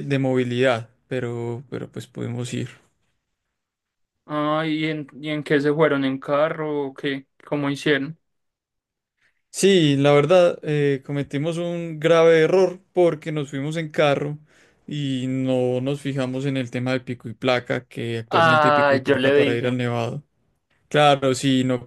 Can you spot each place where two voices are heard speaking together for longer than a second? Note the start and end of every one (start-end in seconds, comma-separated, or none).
18.3-19.8